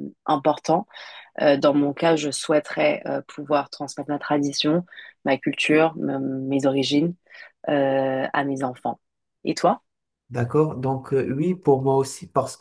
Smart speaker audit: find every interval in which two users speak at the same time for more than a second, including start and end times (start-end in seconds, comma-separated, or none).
none